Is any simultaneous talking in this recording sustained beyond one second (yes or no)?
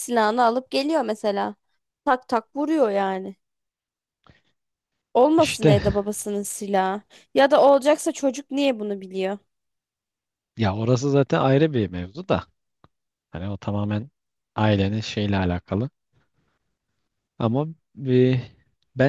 no